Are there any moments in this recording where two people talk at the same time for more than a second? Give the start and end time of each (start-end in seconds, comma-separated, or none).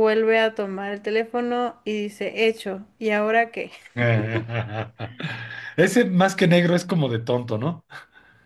none